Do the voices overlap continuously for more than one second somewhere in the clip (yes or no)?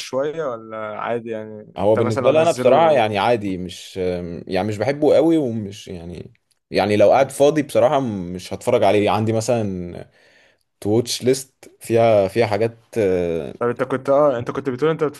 yes